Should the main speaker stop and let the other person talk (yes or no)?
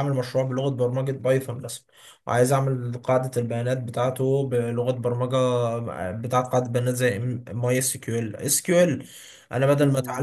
no